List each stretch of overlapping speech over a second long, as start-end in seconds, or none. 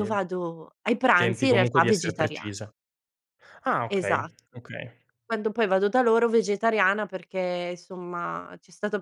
1.1-2.7